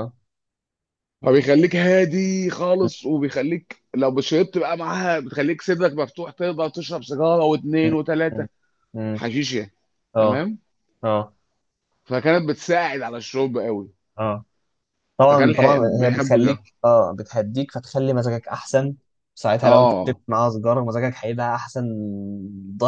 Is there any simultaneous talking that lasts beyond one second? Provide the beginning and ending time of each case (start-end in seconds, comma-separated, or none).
15.3-16.6